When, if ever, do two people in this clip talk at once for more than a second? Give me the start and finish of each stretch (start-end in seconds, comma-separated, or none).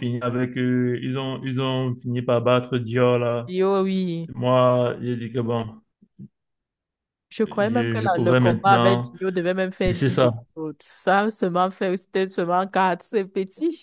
7.5-9.1